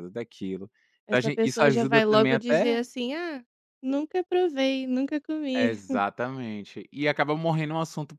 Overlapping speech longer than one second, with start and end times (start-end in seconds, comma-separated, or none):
1.1-2.8